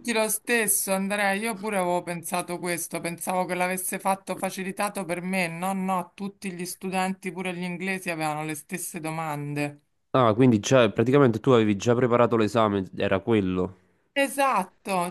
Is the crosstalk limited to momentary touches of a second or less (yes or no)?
yes